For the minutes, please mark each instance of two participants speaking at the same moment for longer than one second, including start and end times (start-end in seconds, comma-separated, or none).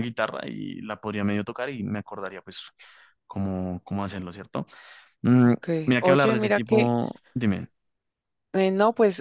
5.4-6.9